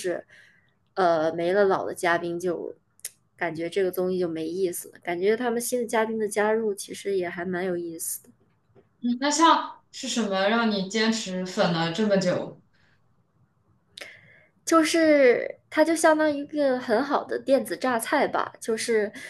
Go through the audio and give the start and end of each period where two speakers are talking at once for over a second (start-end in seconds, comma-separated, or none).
none